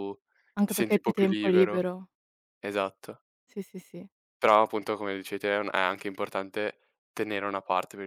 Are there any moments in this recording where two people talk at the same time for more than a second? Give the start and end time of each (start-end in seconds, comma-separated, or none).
0.6-1.8